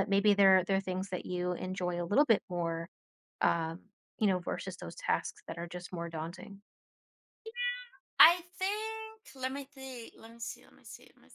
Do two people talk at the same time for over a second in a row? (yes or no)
no